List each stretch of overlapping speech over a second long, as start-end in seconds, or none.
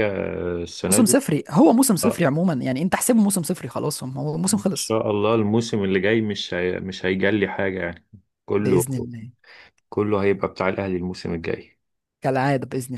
none